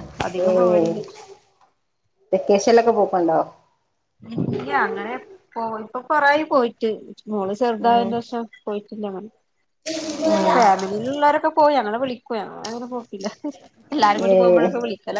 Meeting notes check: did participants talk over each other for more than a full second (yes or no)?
no